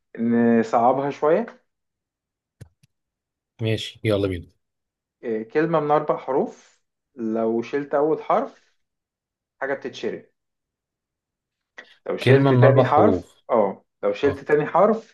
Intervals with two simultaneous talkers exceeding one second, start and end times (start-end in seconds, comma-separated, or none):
12.2-13.4